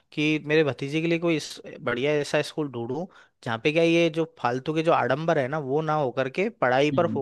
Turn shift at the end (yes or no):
no